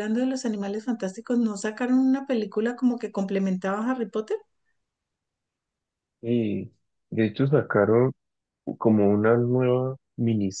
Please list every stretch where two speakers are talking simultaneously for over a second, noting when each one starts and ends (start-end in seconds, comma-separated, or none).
none